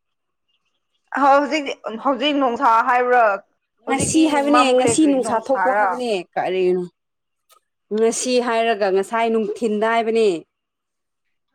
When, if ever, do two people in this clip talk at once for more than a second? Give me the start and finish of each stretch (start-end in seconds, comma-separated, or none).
3.9-5.9